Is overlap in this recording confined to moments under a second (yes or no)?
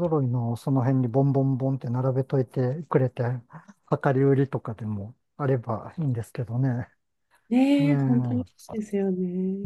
no